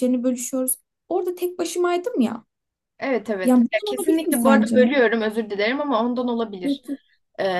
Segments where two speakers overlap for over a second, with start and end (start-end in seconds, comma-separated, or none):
3.4-4.8